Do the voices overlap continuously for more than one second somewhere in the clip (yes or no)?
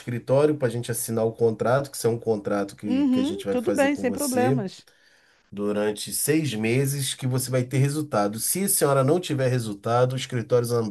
yes